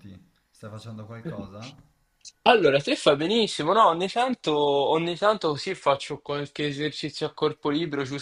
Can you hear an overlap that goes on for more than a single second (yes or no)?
no